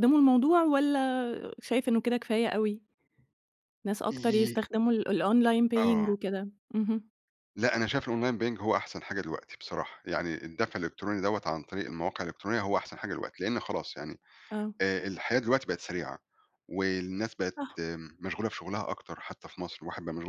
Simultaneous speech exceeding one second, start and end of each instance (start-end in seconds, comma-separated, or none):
none